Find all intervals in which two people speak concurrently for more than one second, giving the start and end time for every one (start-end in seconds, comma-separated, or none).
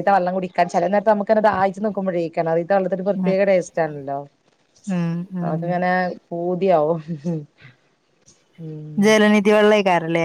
none